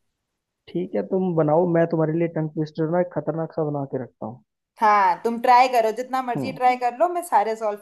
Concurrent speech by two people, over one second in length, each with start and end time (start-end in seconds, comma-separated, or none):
none